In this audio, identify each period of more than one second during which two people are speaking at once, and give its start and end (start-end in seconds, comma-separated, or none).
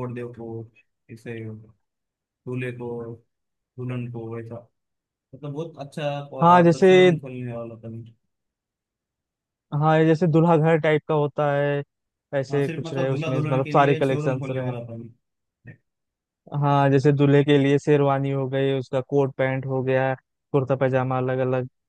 12.5-14.7